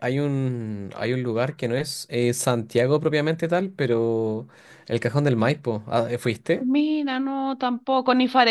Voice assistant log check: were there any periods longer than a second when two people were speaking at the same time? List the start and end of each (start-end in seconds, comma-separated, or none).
none